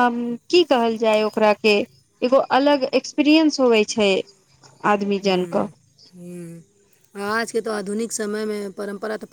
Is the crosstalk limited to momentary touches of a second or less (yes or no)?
yes